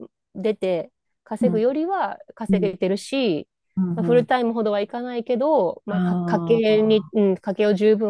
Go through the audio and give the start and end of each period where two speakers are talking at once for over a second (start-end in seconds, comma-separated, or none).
5.9-7.1